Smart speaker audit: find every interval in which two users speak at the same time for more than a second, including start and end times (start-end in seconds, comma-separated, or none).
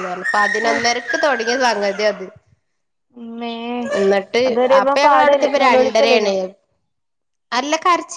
4.8-6.3